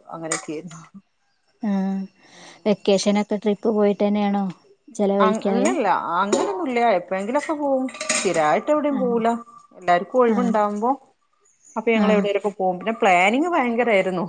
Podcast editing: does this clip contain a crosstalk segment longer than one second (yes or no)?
no